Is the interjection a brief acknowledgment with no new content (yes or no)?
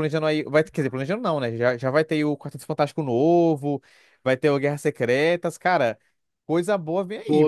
no